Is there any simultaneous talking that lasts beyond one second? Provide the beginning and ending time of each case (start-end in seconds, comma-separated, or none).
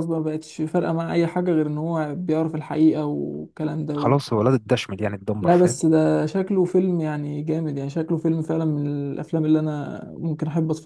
none